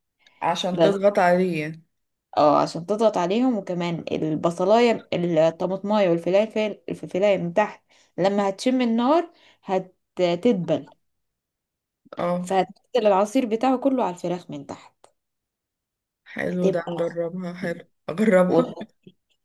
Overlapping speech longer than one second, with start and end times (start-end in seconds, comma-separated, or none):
16.5-17.8